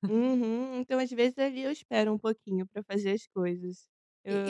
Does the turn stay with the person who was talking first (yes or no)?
no